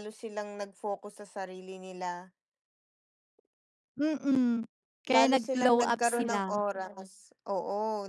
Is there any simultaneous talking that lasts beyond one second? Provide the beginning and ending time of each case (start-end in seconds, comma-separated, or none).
5.1-6.6